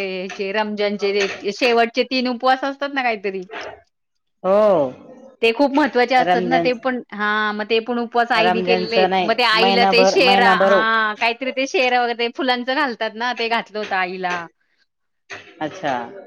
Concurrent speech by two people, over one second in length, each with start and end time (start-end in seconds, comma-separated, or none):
8.4-10.7